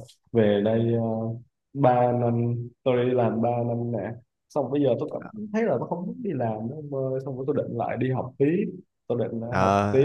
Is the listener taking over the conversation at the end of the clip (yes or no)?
yes